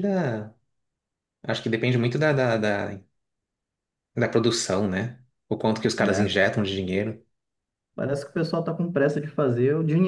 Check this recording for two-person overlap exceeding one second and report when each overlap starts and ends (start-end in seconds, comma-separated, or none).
none